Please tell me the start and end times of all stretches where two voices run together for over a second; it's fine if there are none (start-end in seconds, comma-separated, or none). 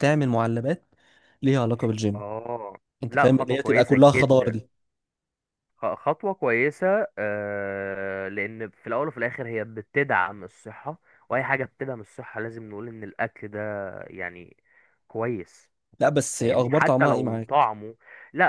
3.0-4.6, 16.3-17.7